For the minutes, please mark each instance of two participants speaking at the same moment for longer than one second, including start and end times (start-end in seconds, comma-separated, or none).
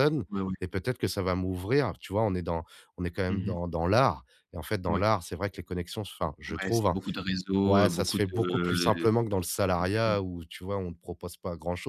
7.6-10.2